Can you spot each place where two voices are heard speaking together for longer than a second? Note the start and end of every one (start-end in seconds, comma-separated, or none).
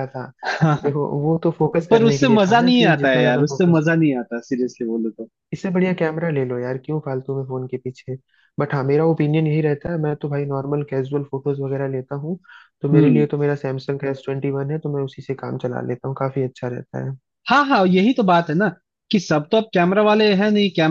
1.9-3.9